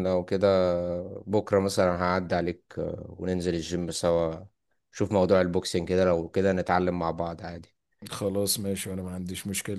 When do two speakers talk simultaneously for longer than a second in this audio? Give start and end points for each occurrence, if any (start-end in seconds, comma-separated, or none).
none